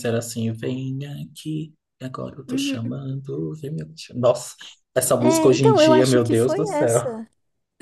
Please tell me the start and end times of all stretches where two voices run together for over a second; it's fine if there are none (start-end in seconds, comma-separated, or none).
5.2-7.1